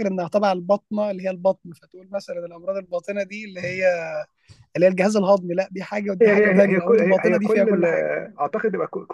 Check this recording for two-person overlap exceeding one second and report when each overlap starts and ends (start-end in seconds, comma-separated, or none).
6.2-8.0